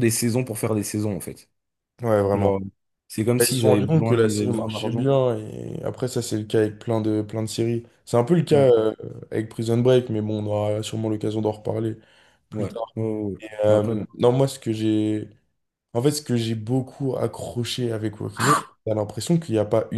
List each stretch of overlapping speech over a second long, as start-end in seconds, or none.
3.4-5.1